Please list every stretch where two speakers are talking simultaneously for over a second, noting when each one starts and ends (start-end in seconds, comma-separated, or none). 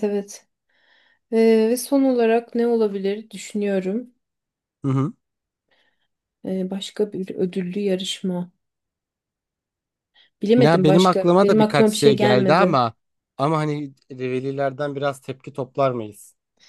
10.6-12.8